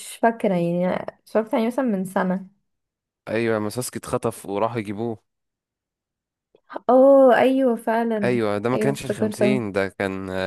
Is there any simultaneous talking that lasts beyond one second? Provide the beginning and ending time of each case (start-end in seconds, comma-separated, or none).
8.2-9.6